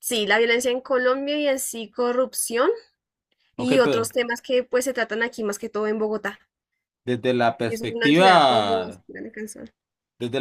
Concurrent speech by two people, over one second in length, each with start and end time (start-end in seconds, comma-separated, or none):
7.7-9.0